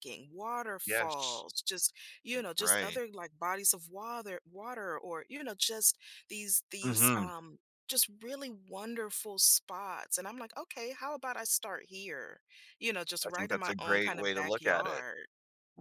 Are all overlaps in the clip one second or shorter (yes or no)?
no